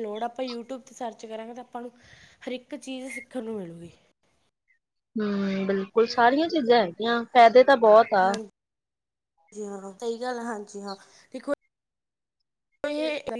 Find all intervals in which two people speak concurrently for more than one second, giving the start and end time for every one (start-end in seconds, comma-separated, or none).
none